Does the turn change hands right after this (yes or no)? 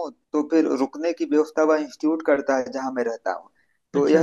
no